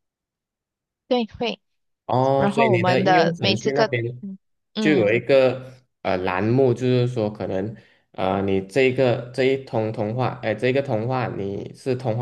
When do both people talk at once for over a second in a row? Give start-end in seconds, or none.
2.4-3.9